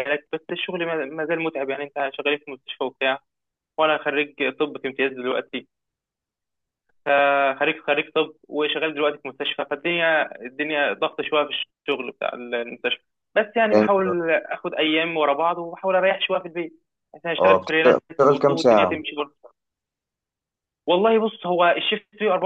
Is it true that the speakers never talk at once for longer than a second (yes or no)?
no